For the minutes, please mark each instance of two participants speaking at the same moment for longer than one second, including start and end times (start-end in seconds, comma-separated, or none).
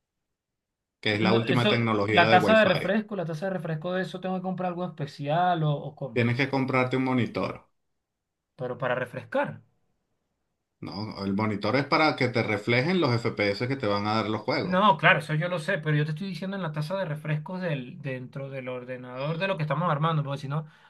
1.1-2.9